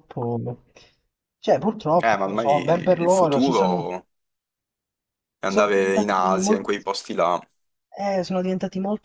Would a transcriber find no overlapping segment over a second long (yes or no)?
no